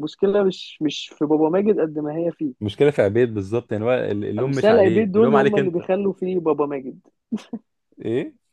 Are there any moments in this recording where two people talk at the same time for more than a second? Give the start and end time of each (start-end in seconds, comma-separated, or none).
4.4-5.8